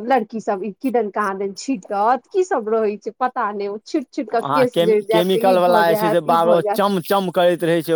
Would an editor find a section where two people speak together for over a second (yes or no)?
yes